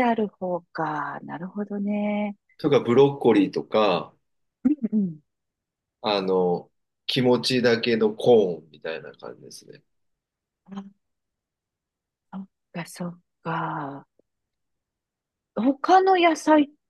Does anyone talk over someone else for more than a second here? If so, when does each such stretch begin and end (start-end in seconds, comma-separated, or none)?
none